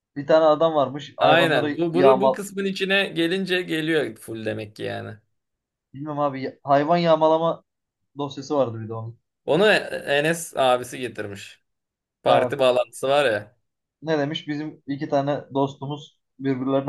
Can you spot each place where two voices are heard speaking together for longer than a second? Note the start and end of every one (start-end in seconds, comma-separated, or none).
1.2-2.4